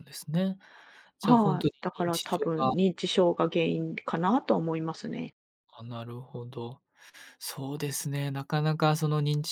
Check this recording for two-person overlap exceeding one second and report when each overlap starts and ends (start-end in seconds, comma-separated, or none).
1.2-2.7